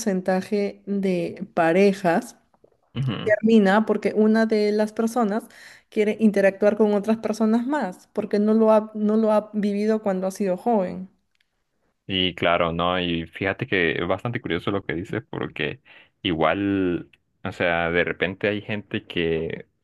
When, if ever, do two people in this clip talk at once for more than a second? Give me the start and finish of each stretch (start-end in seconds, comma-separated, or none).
none